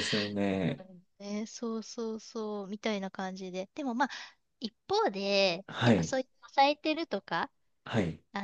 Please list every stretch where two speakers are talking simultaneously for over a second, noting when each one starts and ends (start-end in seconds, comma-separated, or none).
none